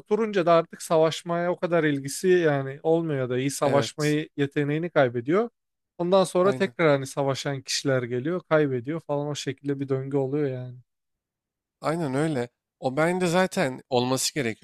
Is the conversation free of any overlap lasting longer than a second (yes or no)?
yes